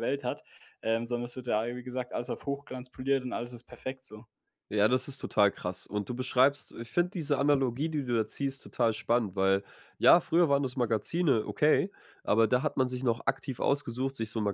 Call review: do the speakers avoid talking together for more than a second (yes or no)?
yes